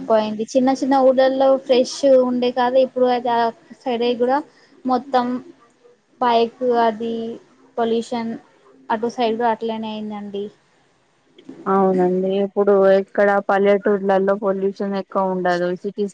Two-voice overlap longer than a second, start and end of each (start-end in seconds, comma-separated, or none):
none